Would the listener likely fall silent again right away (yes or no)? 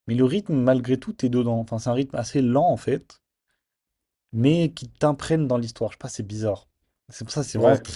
yes